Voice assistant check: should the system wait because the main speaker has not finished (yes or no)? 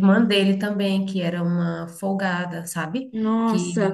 no